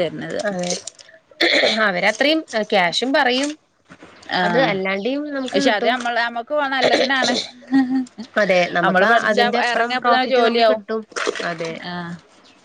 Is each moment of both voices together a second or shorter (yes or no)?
no